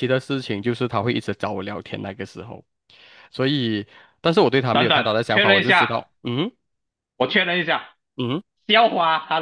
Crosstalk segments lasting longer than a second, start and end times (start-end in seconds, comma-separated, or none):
4.7-6.0